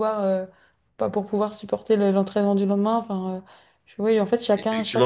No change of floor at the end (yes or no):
no